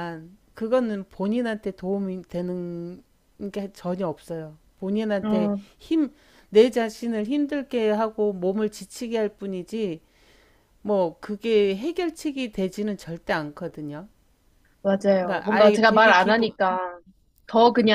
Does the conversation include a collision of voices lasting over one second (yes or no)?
yes